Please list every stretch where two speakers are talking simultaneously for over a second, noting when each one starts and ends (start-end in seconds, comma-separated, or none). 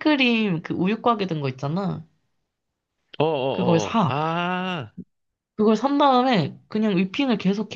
none